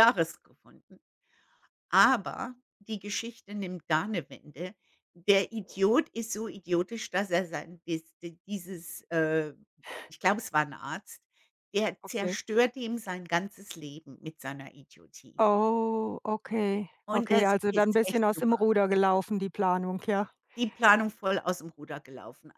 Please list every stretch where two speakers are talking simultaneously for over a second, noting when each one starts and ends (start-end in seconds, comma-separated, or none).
17.1-18.6